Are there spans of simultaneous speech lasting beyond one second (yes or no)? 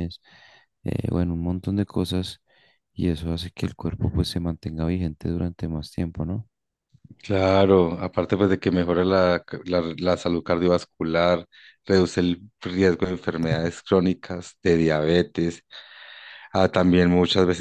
no